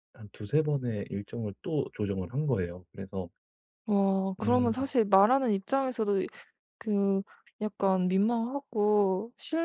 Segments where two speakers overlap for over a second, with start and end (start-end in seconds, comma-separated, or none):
none